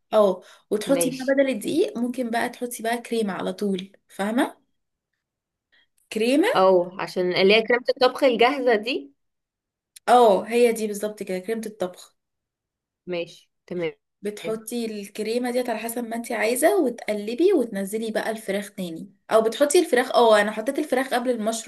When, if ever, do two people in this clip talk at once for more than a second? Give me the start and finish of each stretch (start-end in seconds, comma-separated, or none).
none